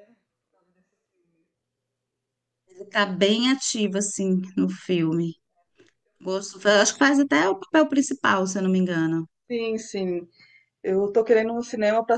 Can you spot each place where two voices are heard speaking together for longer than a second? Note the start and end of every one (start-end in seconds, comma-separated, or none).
none